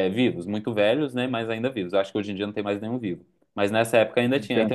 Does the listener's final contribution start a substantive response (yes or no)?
no